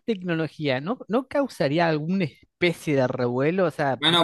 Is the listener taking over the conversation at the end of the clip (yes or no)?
yes